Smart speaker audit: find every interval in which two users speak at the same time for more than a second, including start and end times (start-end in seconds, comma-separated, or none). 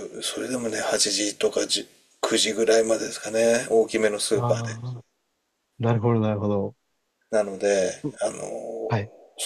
none